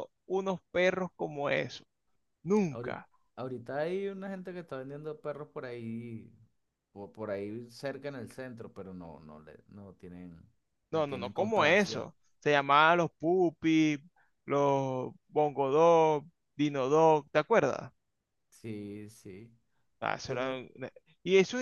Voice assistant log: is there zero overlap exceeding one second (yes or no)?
no